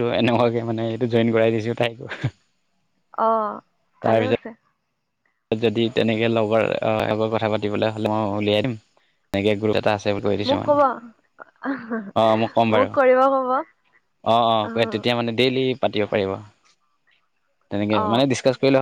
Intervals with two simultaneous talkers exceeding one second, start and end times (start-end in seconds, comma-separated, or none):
none